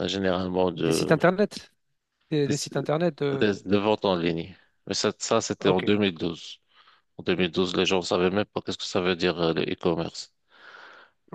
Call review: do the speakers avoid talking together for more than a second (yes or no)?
yes